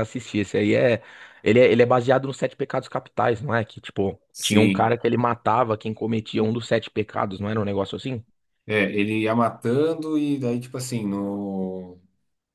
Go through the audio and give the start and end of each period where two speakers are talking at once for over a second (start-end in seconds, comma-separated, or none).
none